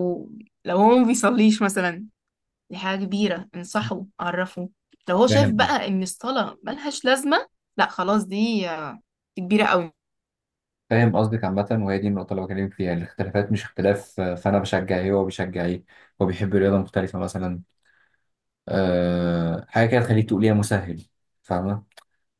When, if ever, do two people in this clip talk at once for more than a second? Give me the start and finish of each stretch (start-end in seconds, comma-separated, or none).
none